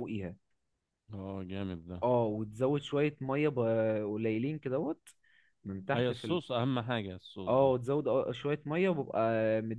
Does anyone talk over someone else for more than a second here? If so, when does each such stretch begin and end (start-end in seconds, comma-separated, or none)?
none